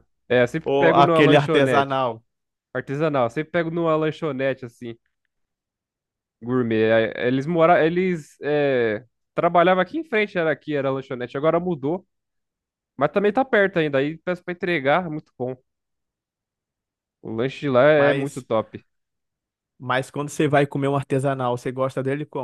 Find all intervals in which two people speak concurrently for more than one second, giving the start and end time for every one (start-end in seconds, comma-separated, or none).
0.6-2.0